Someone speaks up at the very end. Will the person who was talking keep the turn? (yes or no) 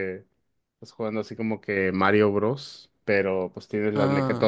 yes